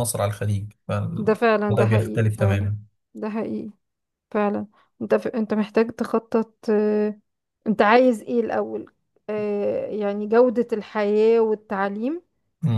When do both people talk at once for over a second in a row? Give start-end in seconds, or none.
1.2-2.7